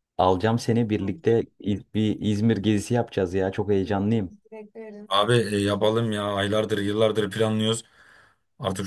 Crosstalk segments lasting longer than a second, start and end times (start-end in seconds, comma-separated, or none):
none